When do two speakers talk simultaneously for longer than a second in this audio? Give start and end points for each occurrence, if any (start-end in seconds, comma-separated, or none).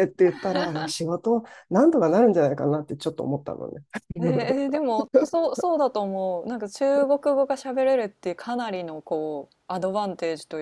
none